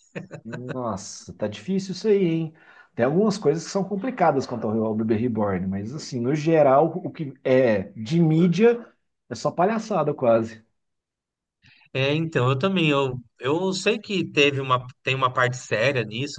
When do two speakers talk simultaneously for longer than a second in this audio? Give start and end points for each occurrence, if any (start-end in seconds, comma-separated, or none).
none